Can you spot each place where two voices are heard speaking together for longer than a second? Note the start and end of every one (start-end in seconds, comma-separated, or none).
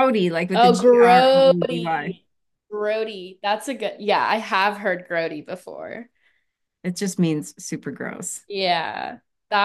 0.5-2.2